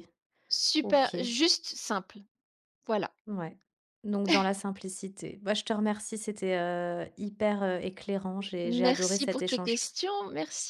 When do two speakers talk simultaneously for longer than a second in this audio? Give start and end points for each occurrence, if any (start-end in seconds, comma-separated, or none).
8.6-9.9